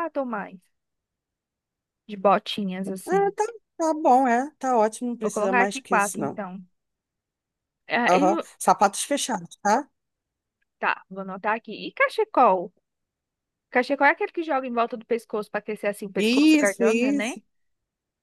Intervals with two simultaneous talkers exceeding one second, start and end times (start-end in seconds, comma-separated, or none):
5.2-6.4, 16.2-17.4